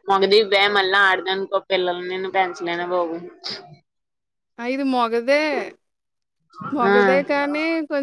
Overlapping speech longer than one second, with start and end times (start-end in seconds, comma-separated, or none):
none